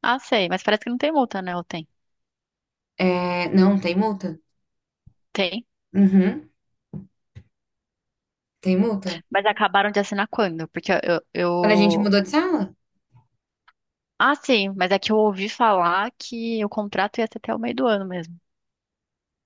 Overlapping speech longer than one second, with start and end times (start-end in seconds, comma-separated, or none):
none